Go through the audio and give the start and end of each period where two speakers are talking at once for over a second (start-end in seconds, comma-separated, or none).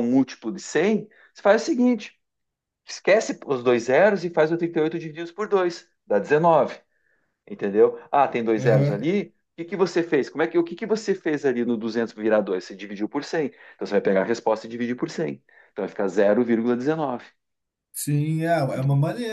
none